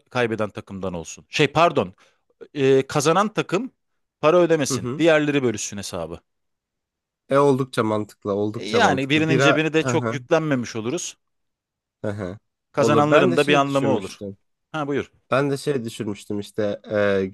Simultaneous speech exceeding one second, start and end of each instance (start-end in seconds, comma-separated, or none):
8.6-10.2, 12.8-14.2